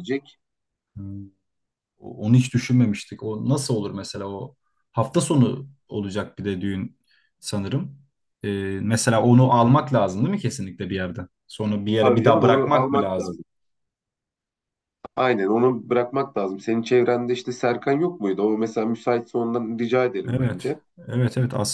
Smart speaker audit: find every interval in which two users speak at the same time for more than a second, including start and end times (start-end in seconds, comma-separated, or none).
11.9-13.4